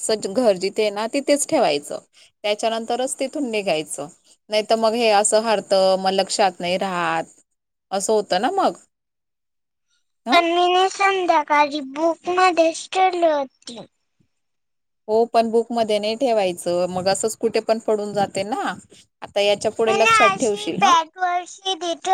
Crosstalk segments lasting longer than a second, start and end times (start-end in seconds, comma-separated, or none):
none